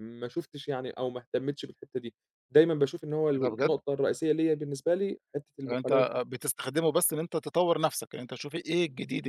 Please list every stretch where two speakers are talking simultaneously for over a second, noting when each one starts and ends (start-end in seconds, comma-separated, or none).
none